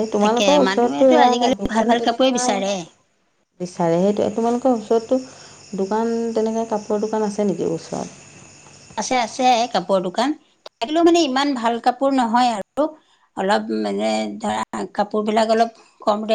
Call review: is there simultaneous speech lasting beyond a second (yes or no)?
yes